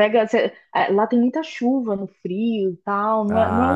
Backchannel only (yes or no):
yes